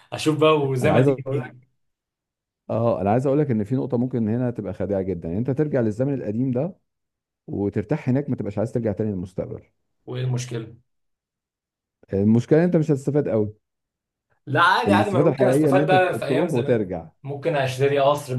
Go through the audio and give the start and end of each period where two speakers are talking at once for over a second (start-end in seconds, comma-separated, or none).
14.9-17.1